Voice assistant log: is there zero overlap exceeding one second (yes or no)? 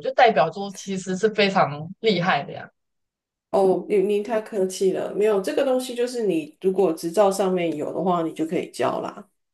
yes